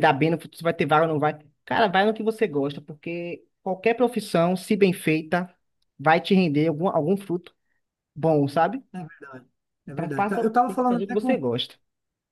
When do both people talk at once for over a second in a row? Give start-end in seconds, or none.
9.9-11.4